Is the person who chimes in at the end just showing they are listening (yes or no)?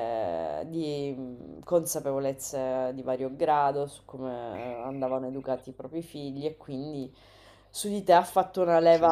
yes